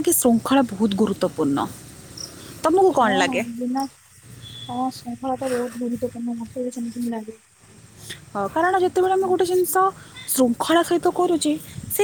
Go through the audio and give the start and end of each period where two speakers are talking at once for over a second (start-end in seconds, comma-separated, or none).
none